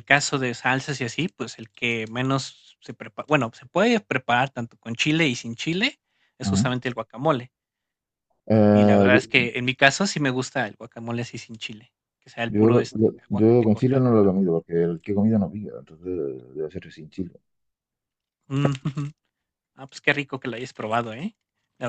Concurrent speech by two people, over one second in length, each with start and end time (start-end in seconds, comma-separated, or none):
12.5-14.1